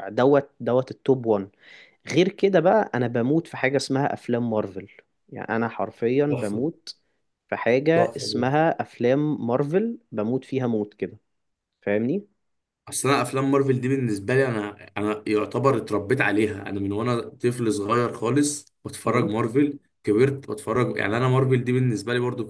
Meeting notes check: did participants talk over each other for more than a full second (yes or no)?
no